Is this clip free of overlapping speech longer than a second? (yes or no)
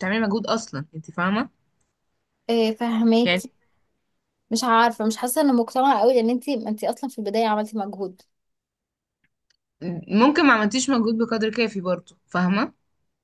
yes